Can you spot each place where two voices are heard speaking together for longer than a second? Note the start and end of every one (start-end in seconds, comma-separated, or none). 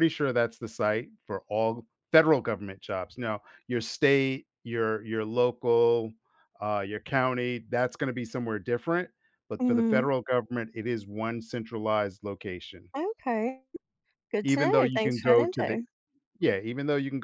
14.4-15.8